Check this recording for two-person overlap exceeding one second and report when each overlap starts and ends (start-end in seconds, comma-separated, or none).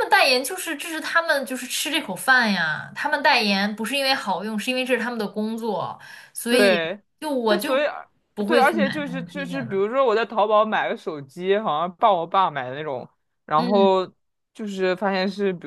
8.5-9.8